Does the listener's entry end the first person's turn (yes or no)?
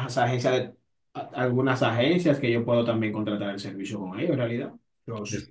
yes